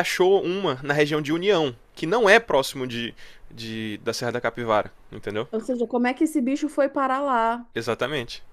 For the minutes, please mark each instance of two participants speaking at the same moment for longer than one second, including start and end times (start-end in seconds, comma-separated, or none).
none